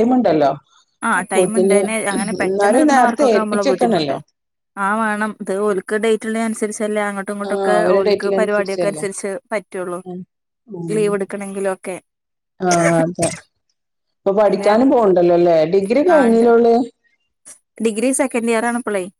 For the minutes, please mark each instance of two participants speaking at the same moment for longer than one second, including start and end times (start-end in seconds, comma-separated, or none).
2.5-4.1, 7.5-9.0